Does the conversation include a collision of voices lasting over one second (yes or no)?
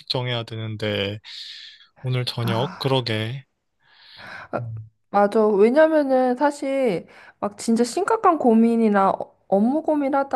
no